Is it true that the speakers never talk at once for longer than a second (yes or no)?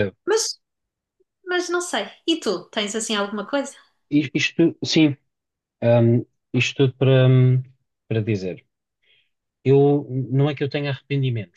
yes